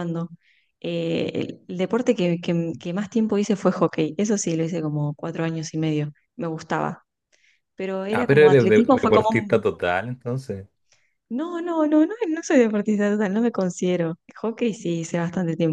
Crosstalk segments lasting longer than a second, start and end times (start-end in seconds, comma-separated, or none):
8.1-9.6